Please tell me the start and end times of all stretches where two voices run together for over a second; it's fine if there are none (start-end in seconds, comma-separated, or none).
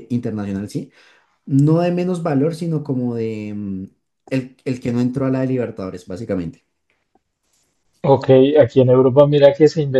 none